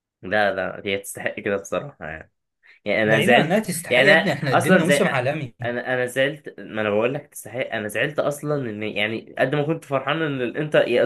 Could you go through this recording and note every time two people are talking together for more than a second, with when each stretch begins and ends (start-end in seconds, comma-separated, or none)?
3.0-5.0